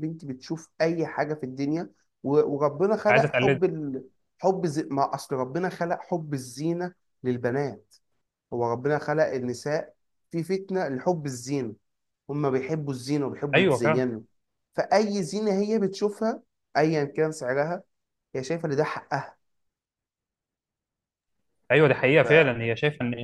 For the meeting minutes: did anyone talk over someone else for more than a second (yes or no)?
no